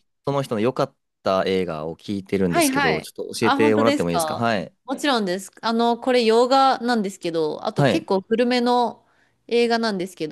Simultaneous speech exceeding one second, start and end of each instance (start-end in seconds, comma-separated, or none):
2.5-4.7